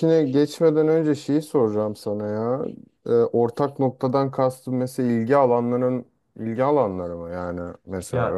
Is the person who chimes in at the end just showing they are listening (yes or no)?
no